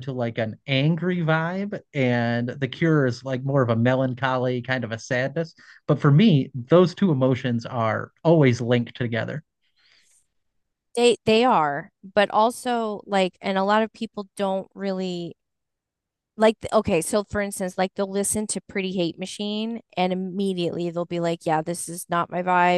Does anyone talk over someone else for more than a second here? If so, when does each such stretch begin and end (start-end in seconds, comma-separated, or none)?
none